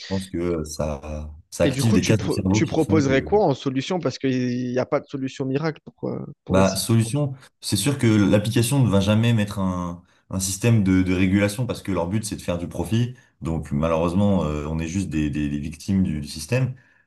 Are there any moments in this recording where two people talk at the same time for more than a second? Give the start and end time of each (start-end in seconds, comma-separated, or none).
1.6-3.3